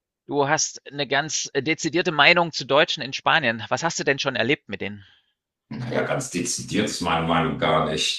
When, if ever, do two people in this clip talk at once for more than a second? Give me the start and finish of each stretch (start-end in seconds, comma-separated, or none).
none